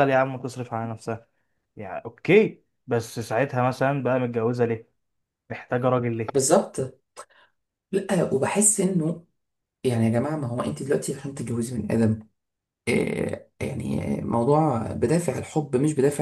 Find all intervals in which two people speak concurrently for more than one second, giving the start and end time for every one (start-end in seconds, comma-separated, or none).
none